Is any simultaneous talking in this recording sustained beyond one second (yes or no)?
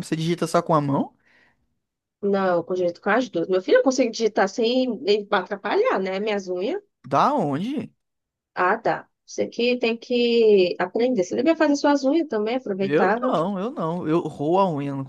no